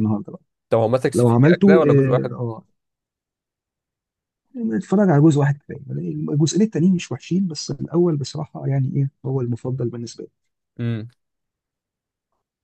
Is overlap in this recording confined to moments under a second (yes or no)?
no